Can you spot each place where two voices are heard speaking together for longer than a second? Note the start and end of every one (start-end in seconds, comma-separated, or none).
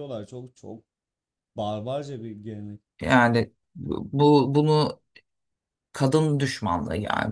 none